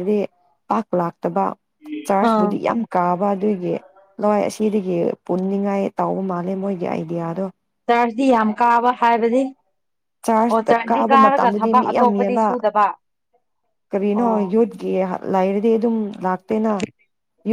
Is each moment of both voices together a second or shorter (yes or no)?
no